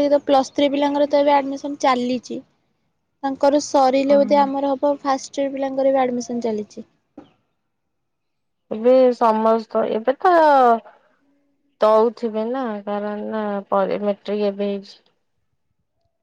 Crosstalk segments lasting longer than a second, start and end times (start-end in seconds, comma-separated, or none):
none